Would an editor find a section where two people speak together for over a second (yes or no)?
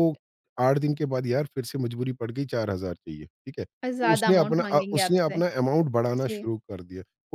yes